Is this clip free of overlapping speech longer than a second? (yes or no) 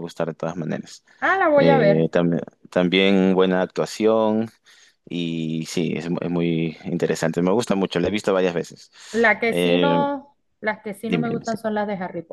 yes